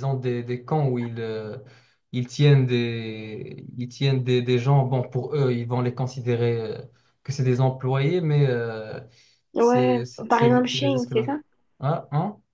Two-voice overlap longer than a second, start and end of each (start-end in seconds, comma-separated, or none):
9.6-11.3